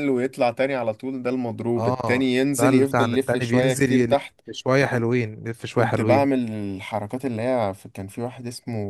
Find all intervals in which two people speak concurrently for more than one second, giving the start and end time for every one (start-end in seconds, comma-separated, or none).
1.8-4.4